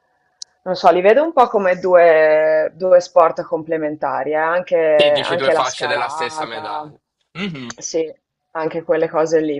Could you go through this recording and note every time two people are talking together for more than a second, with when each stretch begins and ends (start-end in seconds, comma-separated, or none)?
4.9-6.9